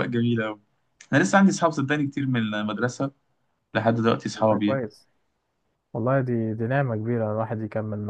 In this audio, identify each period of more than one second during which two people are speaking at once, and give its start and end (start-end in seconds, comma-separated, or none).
none